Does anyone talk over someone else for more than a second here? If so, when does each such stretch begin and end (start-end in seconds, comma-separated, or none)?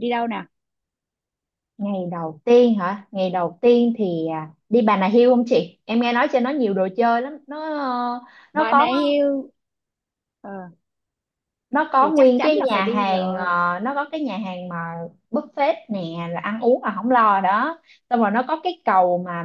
12.0-13.5